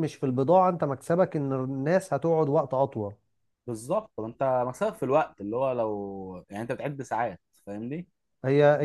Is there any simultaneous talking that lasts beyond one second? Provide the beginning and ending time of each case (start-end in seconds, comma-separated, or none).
none